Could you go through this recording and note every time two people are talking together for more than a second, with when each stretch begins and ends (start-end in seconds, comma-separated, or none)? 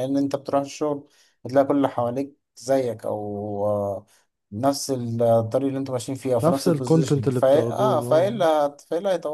6.4-8.4